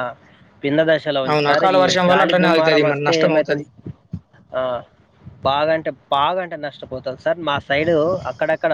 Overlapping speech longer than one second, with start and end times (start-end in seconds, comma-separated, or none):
1.3-3.6